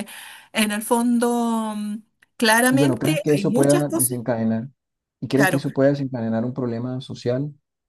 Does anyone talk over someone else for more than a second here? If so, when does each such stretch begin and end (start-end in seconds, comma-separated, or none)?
2.7-4.2